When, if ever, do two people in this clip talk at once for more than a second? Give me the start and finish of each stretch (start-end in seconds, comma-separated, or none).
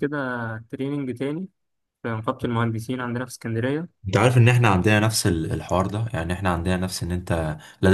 none